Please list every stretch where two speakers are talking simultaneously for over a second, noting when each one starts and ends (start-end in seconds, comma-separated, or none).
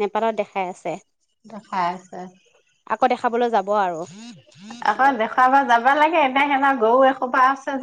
none